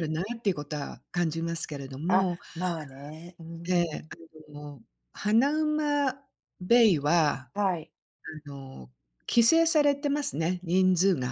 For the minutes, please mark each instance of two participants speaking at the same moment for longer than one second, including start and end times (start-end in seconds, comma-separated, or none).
none